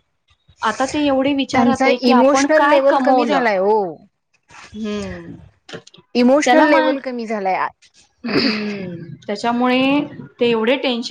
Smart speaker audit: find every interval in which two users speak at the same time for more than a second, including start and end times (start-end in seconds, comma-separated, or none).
1.5-3.4